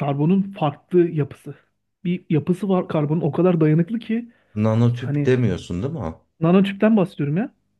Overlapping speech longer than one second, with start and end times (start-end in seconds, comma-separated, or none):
none